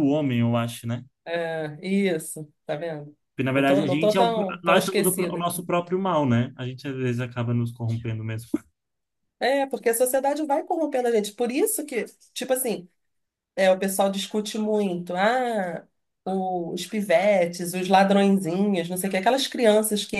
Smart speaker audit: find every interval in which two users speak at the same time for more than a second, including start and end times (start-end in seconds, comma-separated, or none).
3.5-5.5